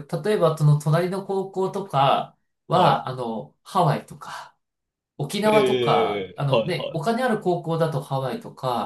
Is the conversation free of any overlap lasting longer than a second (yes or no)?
no